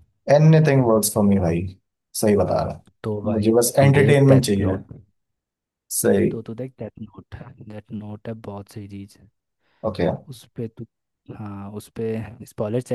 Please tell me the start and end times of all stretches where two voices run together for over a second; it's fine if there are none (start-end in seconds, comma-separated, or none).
3.0-4.8